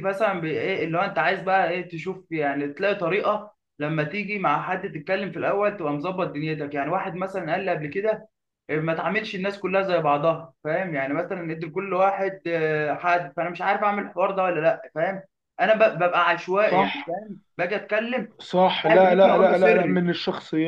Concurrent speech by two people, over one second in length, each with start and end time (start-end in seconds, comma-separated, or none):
18.9-20.1